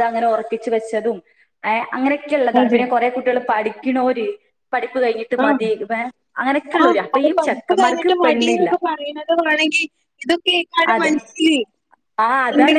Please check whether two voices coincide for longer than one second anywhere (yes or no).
yes